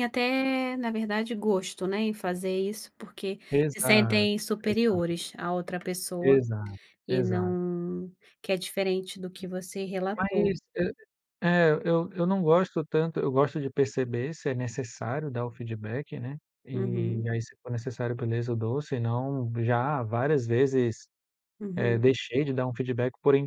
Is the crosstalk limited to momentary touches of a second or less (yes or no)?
no